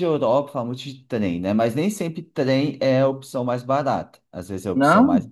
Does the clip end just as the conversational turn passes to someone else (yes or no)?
no